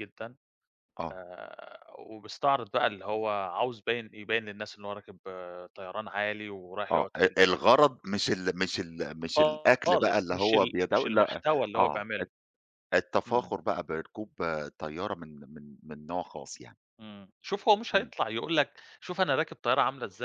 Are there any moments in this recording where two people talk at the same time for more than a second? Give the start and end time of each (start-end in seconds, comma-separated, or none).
9.9-12.3